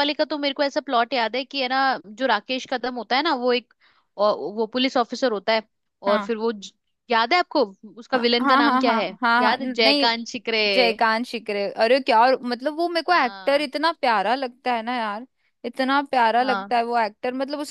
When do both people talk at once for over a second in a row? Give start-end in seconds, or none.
8.1-10.1